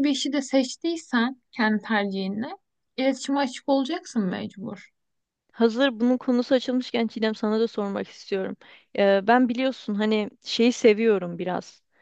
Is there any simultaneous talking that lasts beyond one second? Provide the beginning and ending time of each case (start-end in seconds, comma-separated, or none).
none